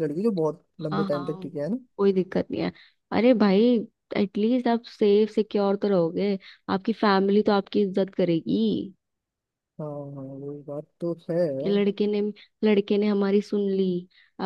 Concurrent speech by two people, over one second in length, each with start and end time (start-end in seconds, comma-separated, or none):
none